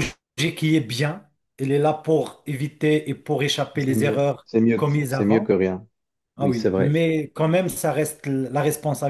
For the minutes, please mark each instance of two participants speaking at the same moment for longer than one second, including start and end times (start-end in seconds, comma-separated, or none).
3.8-5.5